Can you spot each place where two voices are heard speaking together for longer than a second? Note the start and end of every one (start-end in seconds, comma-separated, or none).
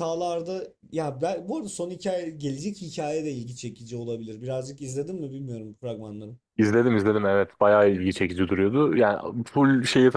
none